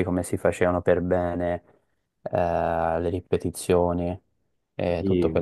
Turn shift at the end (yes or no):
no